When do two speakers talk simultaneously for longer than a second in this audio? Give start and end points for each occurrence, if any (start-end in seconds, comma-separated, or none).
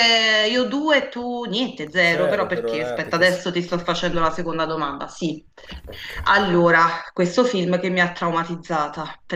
2.0-3.4